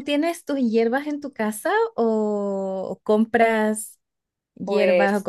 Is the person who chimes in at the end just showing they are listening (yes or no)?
yes